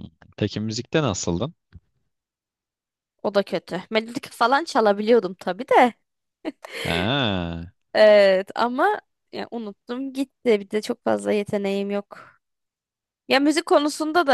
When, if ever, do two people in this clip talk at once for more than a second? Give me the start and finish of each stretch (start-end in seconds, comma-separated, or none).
none